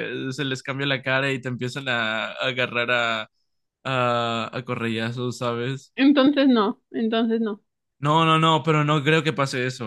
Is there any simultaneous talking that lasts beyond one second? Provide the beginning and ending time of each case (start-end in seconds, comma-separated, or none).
none